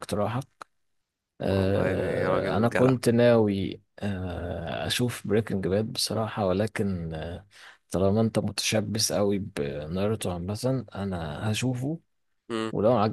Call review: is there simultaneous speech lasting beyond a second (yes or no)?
yes